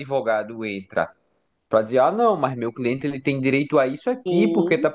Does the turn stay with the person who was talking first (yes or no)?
yes